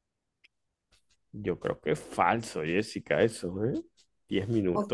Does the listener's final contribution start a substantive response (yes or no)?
yes